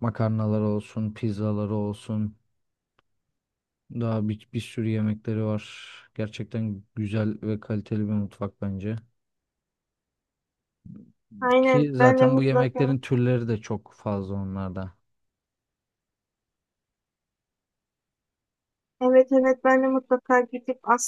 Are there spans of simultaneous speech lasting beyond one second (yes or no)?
yes